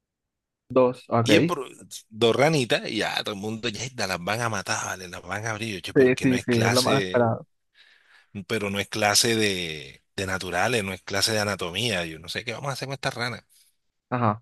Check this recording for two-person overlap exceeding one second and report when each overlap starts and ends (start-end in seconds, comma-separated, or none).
5.9-7.3